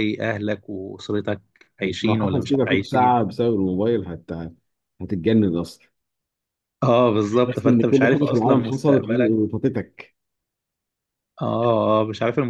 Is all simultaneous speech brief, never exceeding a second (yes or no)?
no